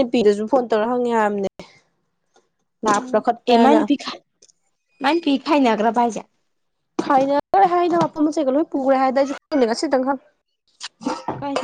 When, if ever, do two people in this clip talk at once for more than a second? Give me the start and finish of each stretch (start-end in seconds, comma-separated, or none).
none